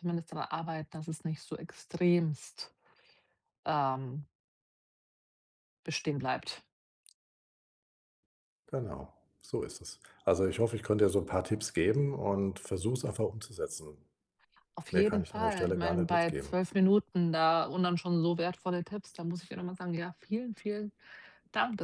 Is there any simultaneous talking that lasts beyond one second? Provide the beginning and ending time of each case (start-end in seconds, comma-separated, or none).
14.9-16.6